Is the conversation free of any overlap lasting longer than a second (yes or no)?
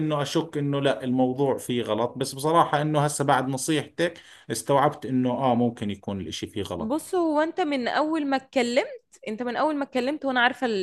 yes